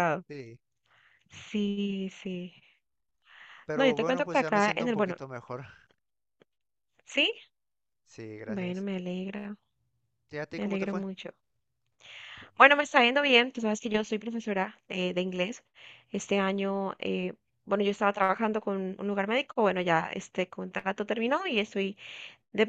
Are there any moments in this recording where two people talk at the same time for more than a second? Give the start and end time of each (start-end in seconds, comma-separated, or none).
3.7-5.2